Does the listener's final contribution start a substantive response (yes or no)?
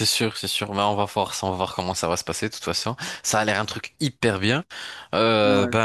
no